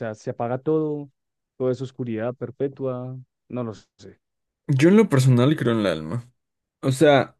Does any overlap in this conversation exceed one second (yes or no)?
no